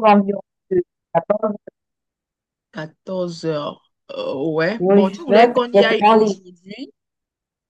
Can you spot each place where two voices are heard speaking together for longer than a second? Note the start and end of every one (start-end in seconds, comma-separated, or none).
4.8-6.4